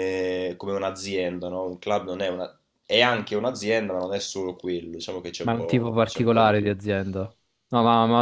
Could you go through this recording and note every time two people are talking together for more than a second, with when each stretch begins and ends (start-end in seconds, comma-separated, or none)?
5.4-6.7